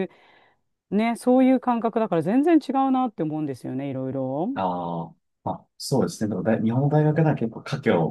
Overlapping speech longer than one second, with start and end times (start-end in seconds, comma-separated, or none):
none